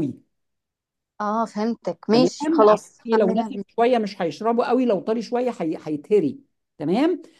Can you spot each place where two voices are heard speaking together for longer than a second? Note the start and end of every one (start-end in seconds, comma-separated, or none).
2.1-3.6